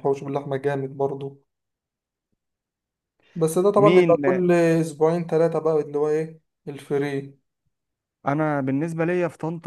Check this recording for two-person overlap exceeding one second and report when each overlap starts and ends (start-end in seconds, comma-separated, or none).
none